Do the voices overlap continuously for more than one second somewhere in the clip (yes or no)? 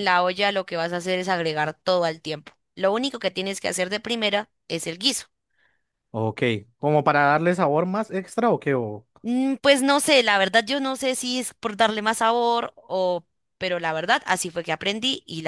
no